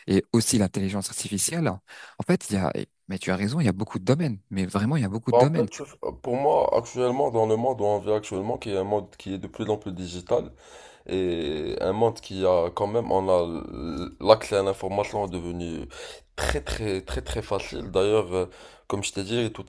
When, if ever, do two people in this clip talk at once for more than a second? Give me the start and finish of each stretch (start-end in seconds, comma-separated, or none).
none